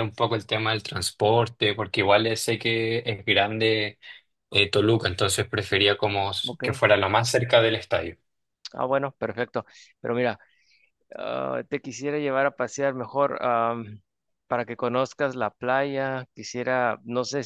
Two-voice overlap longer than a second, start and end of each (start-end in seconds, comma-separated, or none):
none